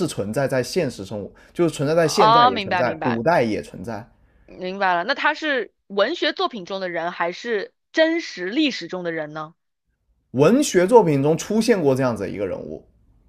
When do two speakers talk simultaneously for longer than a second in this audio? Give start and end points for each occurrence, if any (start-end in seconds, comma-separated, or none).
2.0-3.2